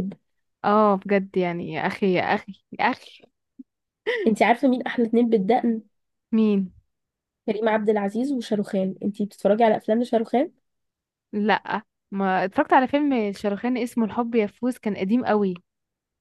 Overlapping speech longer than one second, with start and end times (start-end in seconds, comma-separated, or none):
none